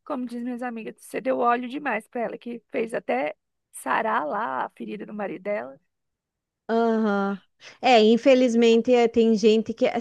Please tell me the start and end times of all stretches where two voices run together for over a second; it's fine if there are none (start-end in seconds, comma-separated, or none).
none